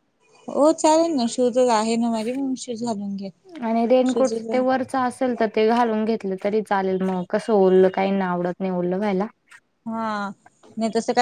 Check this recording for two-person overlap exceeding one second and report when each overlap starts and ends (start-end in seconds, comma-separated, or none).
none